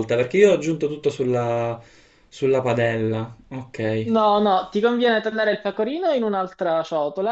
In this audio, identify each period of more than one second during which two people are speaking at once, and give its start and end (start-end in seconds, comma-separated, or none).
none